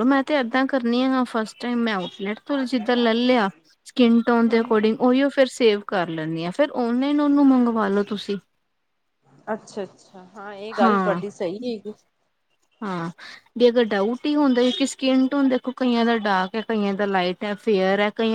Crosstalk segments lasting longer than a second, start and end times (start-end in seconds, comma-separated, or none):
none